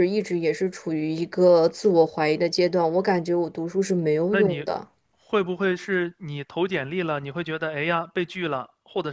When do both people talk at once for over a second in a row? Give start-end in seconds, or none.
none